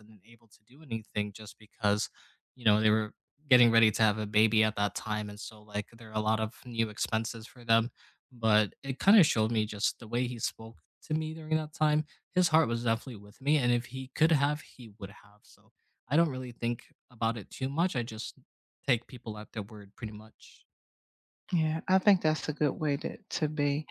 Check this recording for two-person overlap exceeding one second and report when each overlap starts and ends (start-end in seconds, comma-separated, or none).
none